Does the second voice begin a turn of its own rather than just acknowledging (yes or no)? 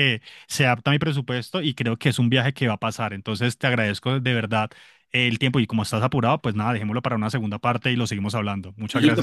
yes